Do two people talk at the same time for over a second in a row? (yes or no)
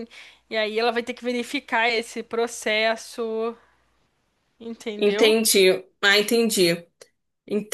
no